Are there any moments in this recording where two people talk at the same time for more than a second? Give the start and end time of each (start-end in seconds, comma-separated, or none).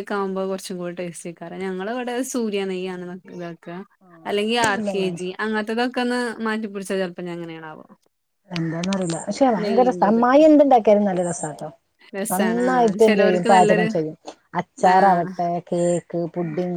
12.3-13.9